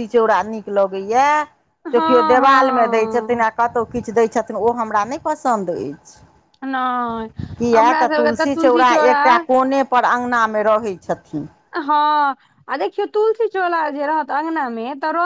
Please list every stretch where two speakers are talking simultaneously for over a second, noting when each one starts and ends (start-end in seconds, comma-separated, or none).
1.9-3.5